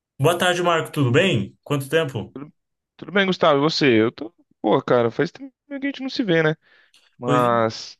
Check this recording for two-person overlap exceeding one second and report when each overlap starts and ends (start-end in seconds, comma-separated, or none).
none